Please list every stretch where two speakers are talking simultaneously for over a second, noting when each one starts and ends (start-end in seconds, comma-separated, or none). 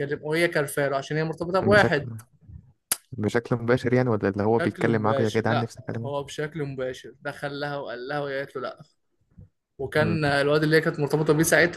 4.6-6.1